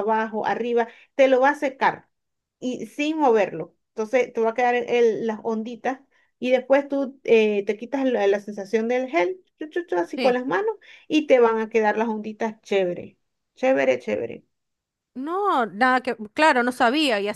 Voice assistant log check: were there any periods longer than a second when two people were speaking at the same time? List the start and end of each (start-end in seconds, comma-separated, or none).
none